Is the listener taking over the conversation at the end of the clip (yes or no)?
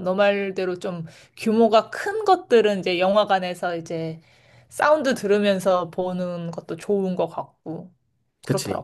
yes